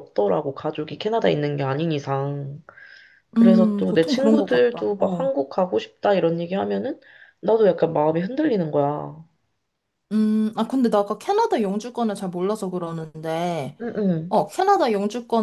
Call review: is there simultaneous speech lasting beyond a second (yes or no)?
yes